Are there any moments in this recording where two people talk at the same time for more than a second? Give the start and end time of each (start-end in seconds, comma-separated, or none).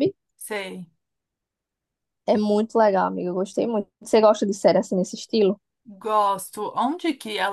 none